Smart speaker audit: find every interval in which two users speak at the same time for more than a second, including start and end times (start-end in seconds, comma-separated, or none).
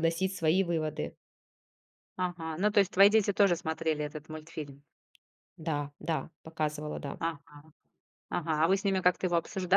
none